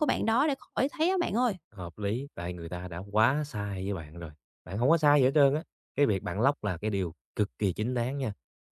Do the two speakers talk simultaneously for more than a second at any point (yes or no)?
no